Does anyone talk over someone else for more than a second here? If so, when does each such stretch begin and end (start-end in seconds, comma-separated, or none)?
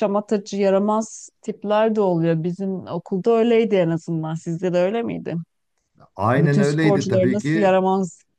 6.4-7.8